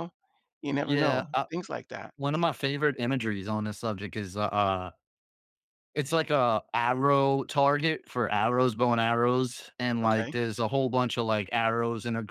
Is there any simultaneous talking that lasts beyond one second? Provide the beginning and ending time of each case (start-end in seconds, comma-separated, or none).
none